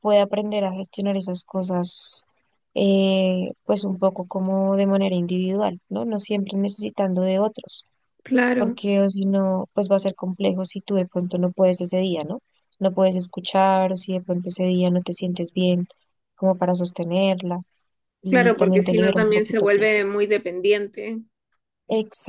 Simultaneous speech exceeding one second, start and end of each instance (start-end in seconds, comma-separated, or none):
18.3-19.9